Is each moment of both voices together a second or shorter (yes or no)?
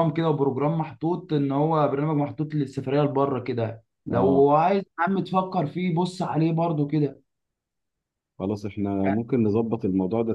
yes